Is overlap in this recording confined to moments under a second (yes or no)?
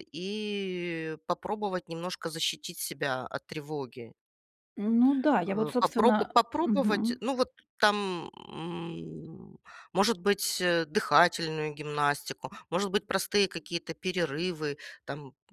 no